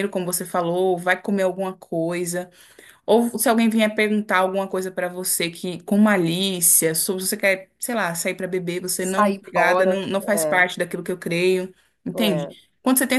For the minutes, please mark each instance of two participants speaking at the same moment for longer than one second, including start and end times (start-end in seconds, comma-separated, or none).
9.0-10.6